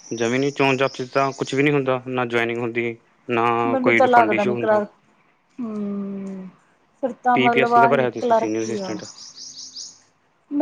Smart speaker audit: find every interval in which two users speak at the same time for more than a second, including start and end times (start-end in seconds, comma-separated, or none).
7.3-8.9